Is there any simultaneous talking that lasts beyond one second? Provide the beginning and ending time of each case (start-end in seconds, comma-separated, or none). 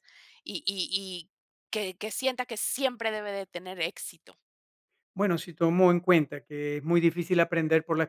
none